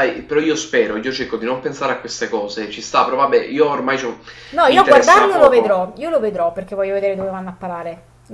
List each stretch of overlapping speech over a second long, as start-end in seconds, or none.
4.7-5.9